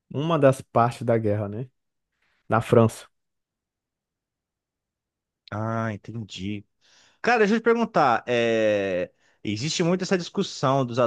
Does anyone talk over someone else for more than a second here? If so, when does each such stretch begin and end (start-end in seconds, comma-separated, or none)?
none